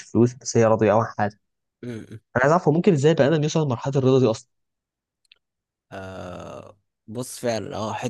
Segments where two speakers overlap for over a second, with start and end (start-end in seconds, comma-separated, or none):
none